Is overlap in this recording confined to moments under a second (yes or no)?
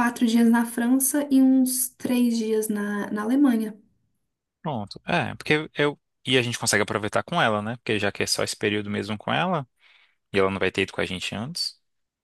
yes